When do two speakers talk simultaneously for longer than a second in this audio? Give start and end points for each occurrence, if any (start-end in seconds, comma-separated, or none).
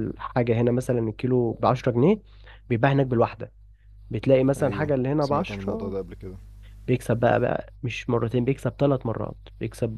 4.6-6.0